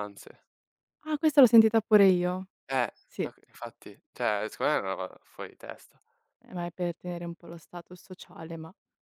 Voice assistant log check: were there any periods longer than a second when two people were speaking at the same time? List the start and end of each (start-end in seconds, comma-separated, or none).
none